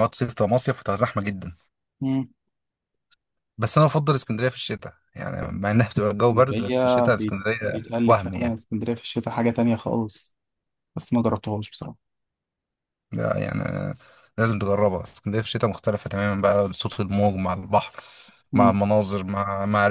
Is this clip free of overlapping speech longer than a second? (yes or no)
no